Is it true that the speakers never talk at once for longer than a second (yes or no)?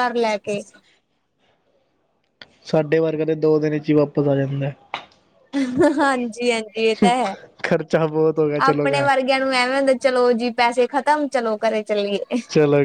yes